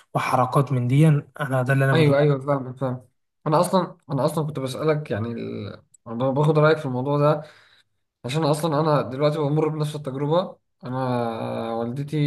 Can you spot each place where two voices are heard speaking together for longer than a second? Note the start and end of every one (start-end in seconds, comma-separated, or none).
none